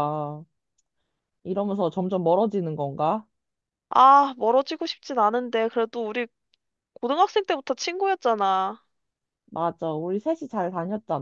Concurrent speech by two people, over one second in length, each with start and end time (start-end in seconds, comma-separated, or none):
none